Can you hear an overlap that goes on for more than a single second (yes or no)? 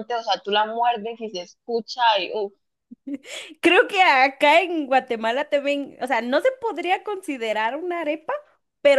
no